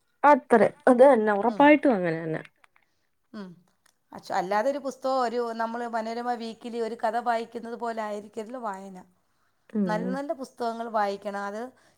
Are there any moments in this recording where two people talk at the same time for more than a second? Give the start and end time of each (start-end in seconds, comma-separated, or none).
none